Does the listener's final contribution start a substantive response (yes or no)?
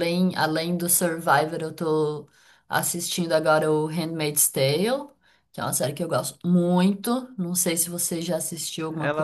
yes